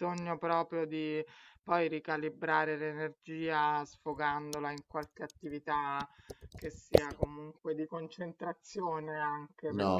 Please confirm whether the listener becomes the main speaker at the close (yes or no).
yes